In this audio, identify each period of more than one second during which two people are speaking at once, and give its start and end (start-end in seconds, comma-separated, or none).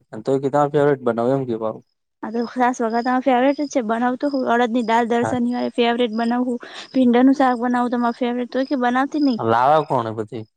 none